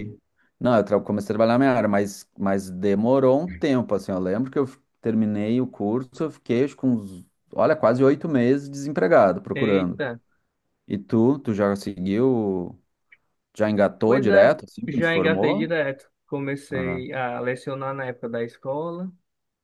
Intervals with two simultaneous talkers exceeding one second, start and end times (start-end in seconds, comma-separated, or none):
14.1-15.8